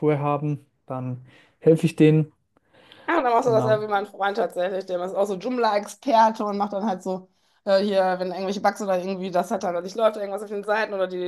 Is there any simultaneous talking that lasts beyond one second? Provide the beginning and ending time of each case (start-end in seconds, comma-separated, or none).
none